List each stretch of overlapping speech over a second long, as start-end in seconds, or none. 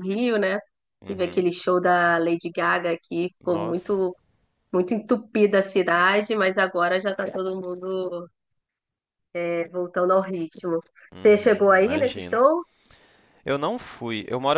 11.2-12.4